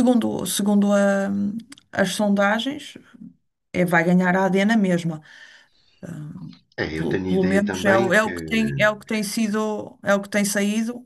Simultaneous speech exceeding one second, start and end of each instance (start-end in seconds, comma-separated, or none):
6.9-8.4